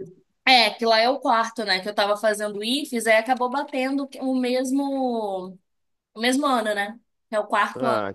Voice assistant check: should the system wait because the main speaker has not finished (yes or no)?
no